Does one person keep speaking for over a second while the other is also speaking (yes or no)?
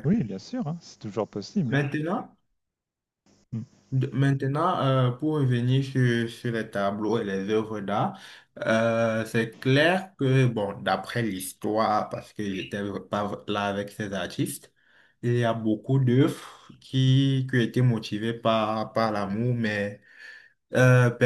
no